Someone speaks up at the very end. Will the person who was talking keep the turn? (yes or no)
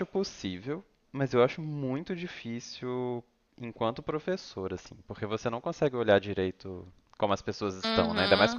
no